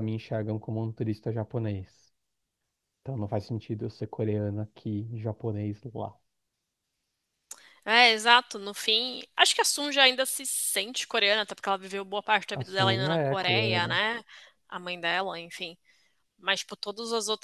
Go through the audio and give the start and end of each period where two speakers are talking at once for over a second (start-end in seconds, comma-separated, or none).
12.5-14.0